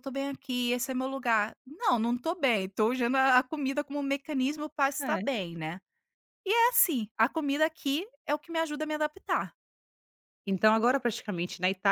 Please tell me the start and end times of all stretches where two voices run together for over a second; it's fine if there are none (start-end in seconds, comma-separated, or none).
none